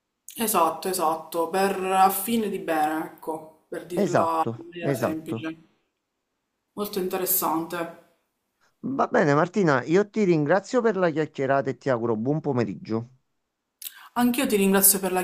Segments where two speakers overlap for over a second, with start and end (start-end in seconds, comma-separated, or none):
4.0-5.5